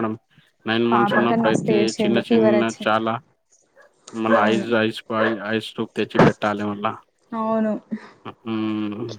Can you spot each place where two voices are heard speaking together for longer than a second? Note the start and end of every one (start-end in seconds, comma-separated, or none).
0.9-3.0